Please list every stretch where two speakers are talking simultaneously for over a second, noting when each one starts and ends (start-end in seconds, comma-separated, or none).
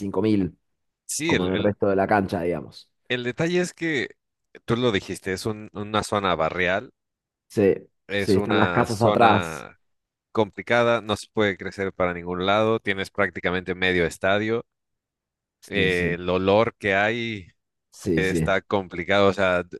8.2-9.7